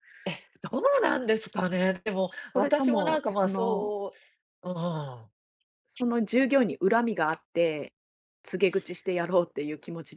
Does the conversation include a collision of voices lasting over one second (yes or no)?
yes